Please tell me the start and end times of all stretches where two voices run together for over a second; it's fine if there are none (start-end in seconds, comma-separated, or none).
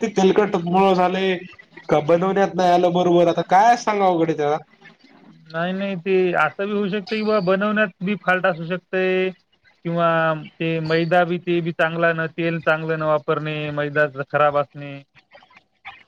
none